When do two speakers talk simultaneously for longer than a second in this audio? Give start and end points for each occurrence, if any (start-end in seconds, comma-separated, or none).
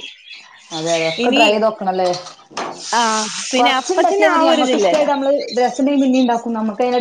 3.6-5.1